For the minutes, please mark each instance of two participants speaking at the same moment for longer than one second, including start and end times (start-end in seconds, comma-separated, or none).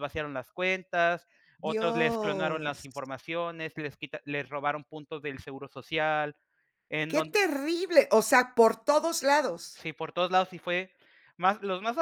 1.6-3.0